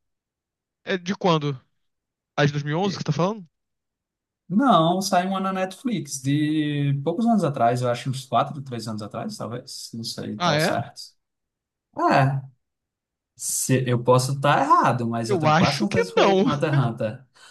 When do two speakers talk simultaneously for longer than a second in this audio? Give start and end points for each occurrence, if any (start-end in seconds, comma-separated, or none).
15.3-16.5